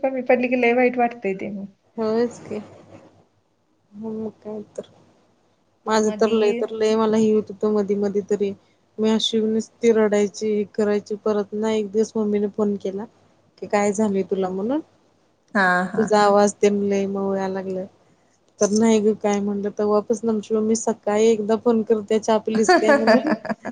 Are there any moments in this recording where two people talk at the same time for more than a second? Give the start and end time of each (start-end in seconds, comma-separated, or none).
none